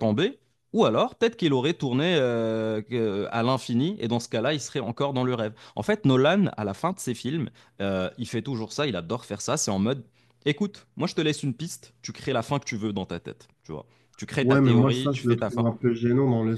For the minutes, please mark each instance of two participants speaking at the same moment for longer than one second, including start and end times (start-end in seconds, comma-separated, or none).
14.4-15.6